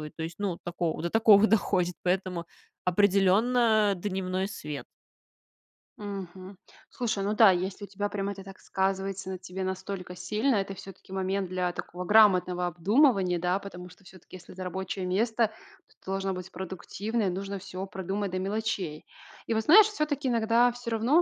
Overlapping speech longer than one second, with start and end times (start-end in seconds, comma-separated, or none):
none